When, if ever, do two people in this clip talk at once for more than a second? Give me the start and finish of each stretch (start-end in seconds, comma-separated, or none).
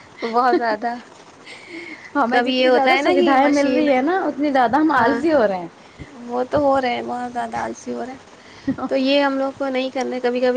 2.3-3.9